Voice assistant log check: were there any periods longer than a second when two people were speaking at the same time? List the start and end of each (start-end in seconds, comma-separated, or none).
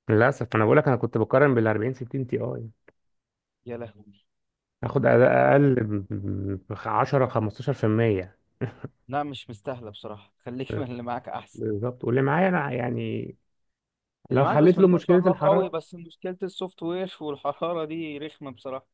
14.3-15.8